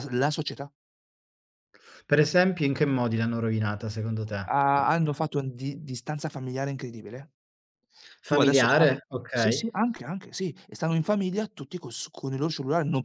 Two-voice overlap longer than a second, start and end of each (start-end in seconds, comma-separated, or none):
8.3-9.6